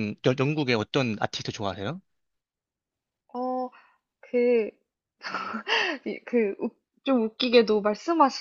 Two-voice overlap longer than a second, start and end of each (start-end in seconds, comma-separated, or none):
none